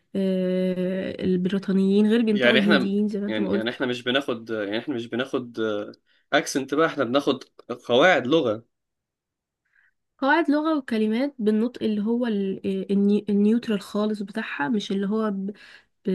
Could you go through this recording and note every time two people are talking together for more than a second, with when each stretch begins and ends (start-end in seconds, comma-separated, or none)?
2.3-3.8